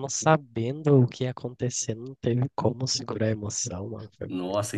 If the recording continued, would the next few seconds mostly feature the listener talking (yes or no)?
yes